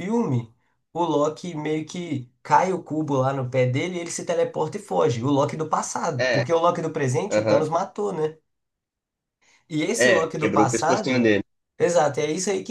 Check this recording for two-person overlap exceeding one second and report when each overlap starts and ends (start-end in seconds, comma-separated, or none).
10.0-11.3